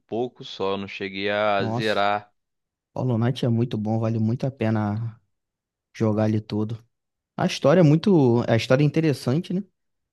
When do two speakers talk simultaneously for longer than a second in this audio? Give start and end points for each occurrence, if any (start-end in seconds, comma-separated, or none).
none